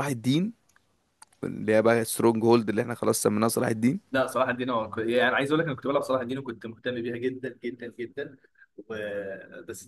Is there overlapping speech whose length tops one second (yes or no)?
no